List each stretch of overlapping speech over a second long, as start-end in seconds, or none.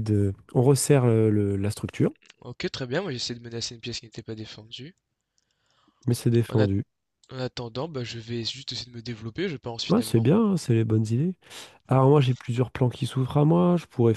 none